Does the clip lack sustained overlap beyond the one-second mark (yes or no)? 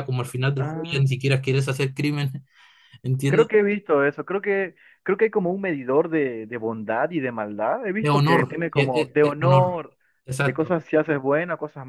no